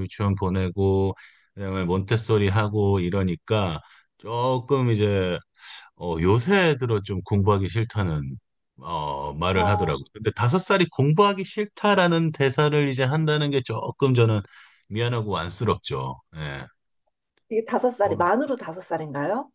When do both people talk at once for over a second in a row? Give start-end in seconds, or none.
none